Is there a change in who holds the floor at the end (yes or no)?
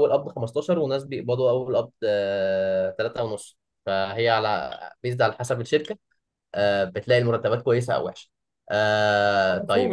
yes